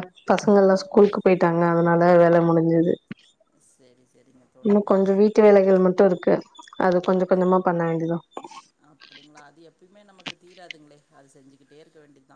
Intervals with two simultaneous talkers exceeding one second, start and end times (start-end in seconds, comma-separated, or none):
none